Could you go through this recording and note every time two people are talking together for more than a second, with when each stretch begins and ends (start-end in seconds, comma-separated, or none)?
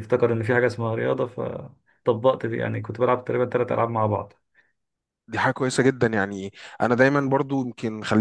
none